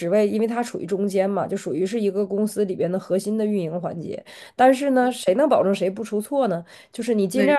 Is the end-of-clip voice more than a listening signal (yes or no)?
no